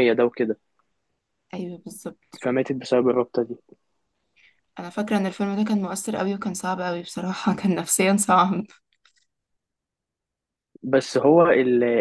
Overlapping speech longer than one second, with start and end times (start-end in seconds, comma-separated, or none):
none